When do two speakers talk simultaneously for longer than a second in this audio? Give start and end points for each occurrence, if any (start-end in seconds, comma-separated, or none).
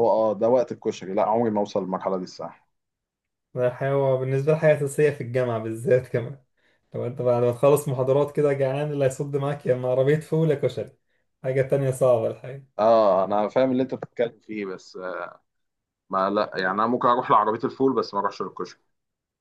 none